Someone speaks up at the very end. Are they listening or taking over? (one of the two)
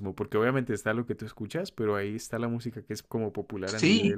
taking over